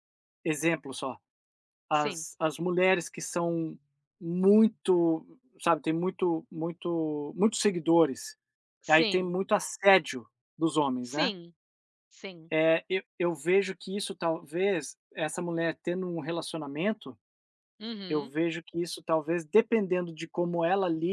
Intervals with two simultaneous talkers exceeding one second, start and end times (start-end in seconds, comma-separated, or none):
none